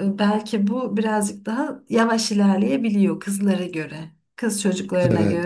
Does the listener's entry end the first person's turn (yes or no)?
no